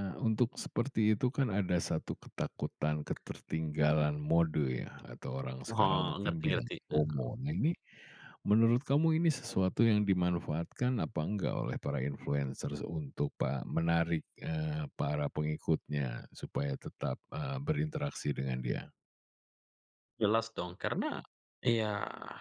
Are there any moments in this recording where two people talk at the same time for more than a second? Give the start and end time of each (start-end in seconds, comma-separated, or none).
5.7-7.2